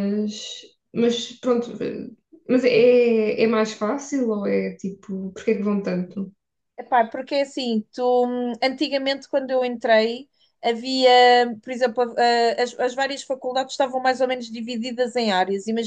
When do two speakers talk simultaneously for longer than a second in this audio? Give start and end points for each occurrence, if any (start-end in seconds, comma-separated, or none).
none